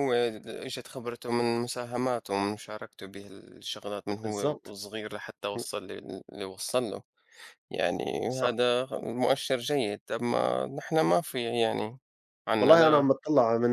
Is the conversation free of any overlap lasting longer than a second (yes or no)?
yes